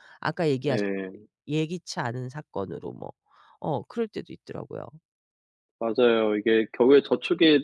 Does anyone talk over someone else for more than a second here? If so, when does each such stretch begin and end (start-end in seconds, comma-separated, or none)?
none